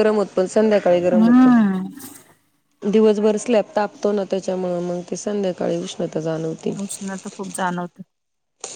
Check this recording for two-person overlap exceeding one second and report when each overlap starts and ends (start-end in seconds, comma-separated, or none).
none